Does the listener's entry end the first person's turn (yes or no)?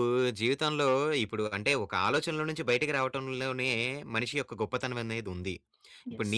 no